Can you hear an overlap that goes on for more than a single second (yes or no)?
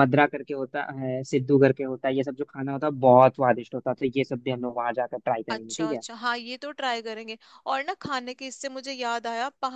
no